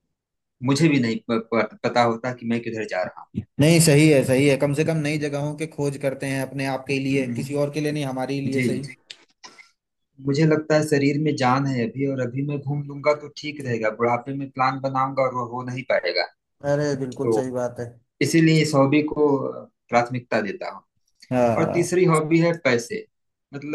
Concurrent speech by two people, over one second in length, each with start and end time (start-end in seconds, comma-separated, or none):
none